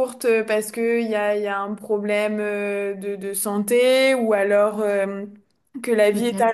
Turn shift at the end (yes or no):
no